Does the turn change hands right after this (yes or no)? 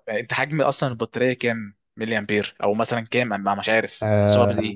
yes